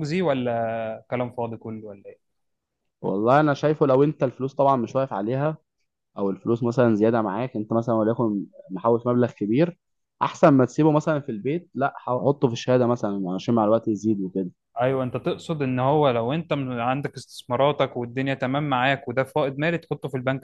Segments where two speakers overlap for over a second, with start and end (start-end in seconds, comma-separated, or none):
none